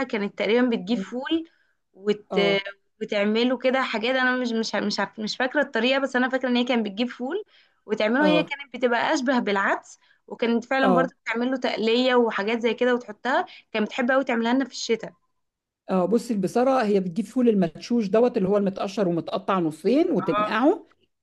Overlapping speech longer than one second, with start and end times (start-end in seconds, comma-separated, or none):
none